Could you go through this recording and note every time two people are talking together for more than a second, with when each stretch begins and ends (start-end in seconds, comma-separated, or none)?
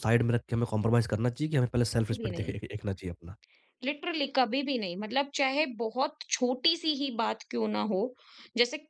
none